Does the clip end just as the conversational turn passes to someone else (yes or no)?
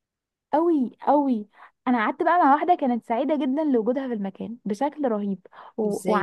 no